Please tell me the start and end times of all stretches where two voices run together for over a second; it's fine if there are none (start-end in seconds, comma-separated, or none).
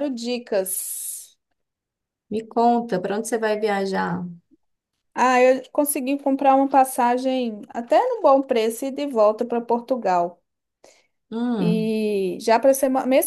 none